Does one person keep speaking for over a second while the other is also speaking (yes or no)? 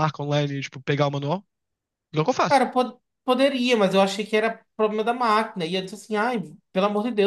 no